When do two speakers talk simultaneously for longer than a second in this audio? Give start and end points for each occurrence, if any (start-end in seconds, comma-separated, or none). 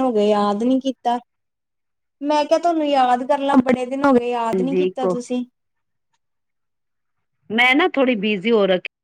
none